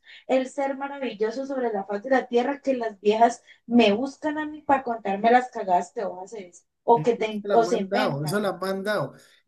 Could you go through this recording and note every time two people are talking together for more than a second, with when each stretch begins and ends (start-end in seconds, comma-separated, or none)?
6.9-8.4